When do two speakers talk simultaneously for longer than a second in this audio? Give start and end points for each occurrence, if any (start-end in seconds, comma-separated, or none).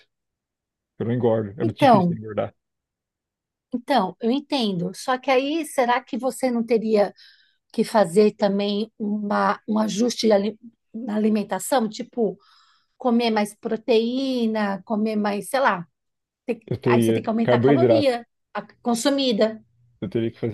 16.7-18.2